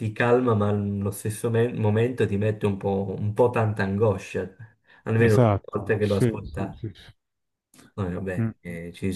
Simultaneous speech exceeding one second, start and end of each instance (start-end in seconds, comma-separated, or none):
5.2-6.8